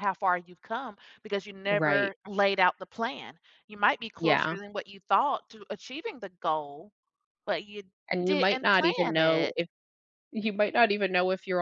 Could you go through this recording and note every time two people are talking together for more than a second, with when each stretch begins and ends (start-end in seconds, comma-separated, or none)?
8.2-9.6